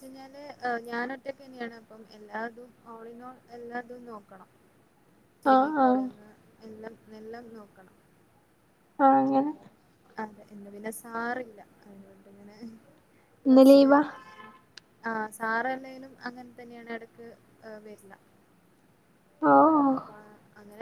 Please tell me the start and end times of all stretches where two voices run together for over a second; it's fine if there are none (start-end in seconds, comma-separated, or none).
none